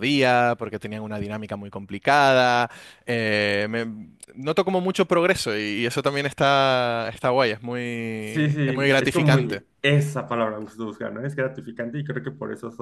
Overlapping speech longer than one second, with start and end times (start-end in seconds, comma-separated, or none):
8.2-9.6